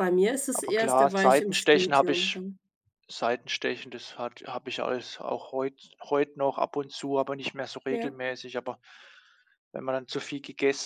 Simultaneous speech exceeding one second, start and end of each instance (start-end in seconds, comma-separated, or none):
0.5-2.4